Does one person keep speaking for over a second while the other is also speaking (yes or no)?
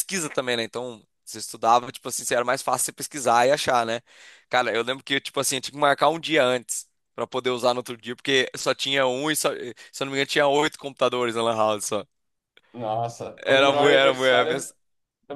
yes